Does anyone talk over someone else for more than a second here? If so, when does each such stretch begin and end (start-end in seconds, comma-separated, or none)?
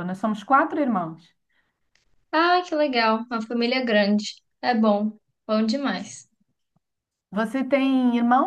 none